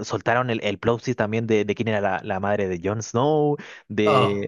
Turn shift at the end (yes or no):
no